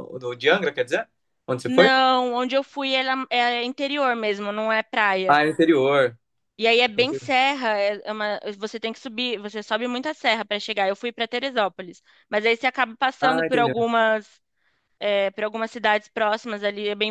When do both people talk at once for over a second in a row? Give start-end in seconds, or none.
none